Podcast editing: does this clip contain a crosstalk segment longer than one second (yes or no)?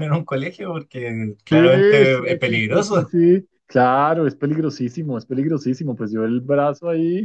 yes